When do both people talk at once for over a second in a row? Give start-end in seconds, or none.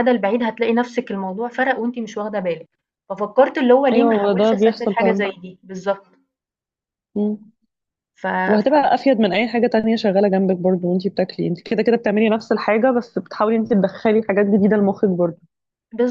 3.9-5.3